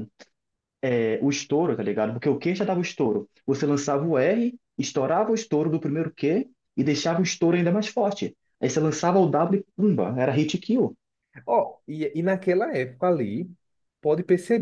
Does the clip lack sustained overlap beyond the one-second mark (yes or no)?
yes